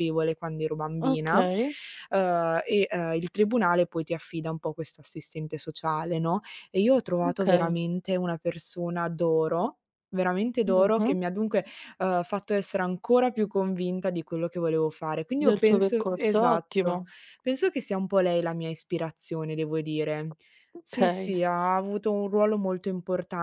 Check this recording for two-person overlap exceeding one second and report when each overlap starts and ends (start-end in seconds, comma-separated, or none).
15.4-17.0